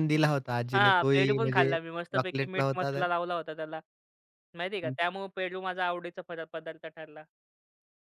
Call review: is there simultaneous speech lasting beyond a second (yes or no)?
yes